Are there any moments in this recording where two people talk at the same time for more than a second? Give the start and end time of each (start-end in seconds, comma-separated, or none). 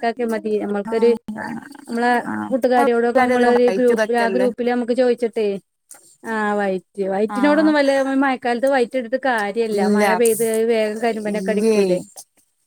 2.8-4.5